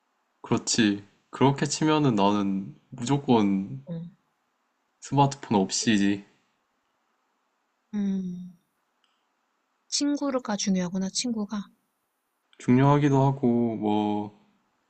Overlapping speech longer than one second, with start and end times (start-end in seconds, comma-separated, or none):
none